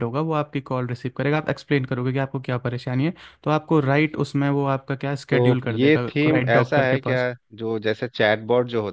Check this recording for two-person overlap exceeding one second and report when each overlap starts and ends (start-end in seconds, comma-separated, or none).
5.3-7.2